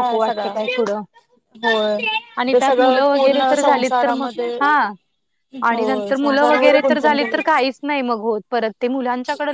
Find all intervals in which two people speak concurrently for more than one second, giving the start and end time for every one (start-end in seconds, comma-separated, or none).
5.7-7.7